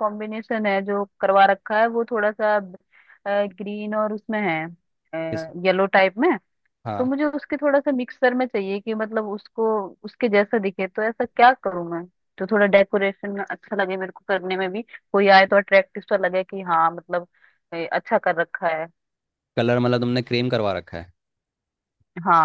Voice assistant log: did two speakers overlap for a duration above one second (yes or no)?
no